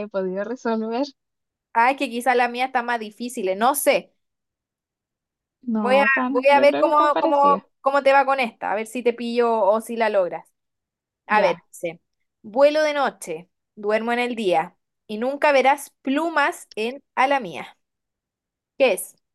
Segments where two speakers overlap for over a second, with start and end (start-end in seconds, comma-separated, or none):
5.7-7.6